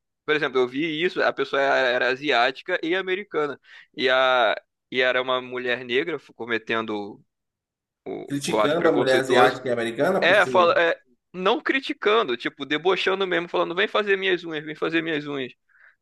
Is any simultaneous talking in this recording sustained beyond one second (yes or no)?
yes